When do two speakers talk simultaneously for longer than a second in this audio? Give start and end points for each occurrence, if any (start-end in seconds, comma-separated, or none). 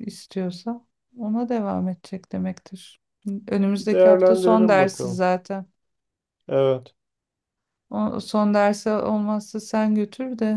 3.8-5.2